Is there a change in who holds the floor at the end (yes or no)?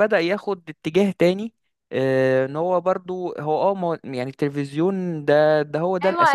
yes